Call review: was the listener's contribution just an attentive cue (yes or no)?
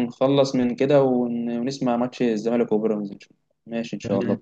no